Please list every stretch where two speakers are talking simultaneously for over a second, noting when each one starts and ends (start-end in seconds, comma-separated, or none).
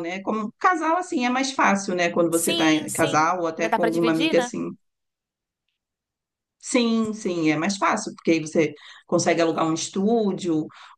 2.3-4.5